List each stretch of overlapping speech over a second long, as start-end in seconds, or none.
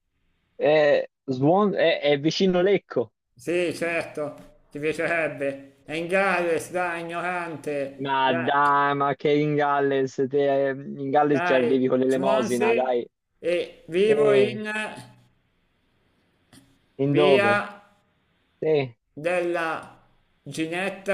11.3-12.8